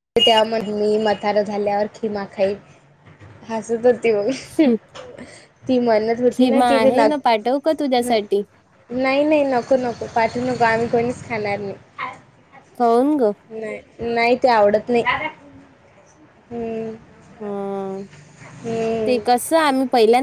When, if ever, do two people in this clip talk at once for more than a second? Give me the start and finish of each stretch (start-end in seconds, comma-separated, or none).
6.3-8.1